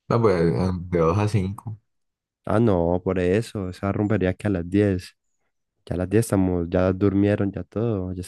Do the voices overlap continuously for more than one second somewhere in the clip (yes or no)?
no